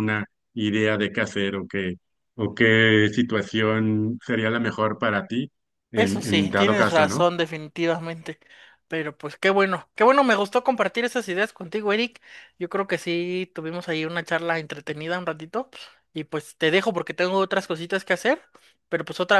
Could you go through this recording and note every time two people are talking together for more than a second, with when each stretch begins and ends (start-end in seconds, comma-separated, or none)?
6.0-7.3